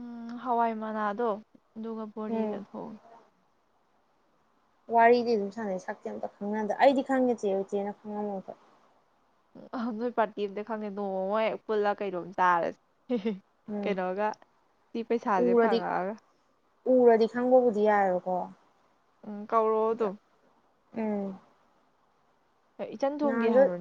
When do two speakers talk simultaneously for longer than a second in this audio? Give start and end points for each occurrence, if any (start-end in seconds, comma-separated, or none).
none